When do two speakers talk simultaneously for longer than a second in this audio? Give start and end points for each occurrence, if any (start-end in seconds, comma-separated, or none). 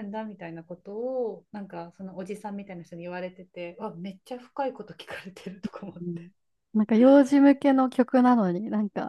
none